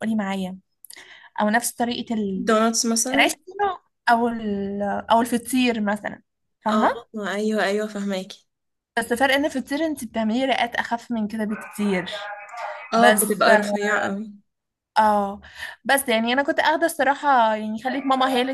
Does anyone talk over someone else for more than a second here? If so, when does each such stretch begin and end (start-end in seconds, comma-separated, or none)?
none